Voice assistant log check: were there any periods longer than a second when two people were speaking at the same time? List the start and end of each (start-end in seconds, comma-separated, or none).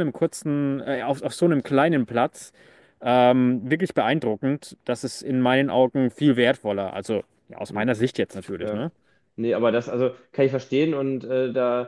none